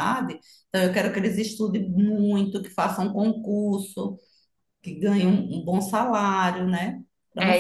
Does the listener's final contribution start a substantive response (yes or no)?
yes